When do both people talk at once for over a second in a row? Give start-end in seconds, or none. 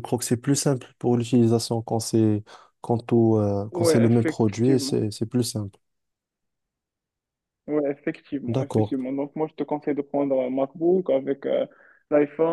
3.7-5.0